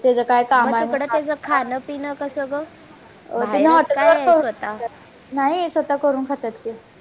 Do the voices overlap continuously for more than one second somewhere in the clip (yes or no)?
yes